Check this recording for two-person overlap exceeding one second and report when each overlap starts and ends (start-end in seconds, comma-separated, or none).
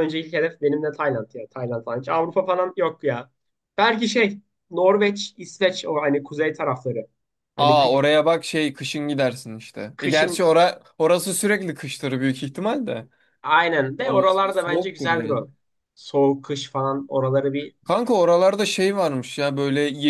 14.0-15.5